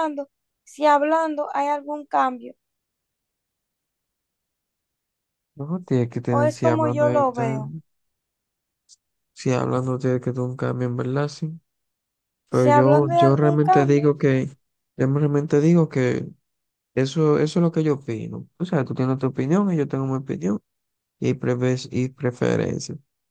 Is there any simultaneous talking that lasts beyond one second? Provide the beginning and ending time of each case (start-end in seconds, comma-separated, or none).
6.3-7.7, 12.5-14.1